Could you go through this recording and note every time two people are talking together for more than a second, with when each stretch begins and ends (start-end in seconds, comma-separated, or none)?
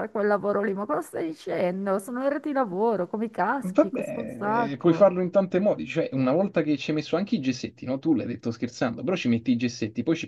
3.6-5.1